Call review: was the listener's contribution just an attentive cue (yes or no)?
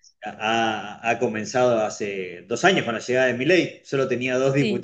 yes